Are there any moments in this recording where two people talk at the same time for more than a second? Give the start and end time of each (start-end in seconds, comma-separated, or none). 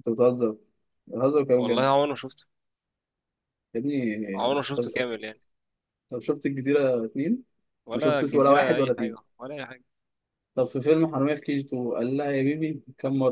7.9-9.2